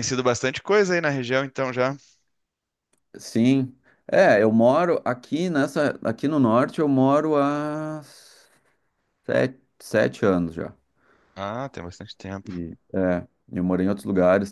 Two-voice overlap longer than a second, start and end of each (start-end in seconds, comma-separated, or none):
none